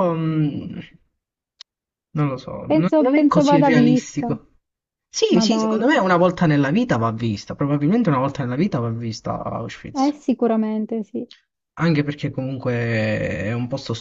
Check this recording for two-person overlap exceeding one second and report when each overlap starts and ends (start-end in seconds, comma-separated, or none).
2.7-4.3